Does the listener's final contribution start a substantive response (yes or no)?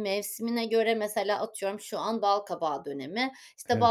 no